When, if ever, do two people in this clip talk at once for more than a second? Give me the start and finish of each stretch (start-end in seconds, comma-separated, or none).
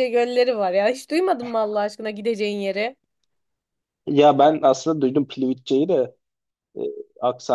none